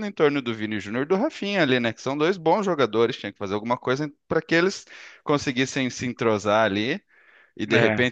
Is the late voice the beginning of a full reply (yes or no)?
no